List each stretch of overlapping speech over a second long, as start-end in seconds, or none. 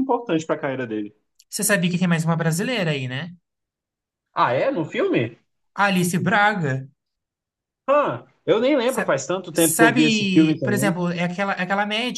8.8-10.9